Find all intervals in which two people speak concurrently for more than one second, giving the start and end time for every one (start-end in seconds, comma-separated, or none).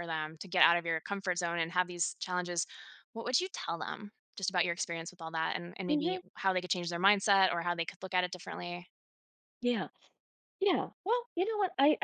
none